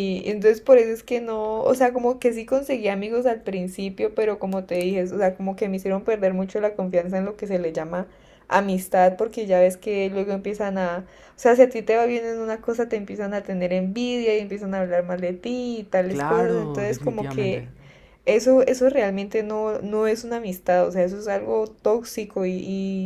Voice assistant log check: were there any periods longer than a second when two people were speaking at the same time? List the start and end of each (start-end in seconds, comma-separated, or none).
16.1-17.7